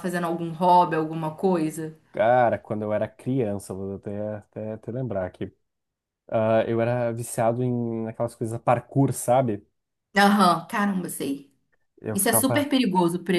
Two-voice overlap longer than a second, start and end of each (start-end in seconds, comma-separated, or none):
none